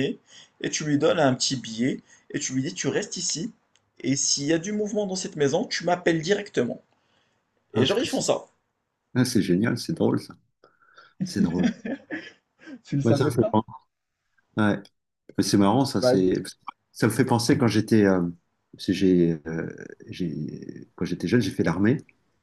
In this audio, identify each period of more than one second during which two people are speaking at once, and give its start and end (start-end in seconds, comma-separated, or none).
none